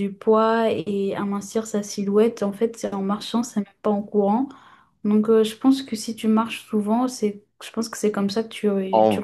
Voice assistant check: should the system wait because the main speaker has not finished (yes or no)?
no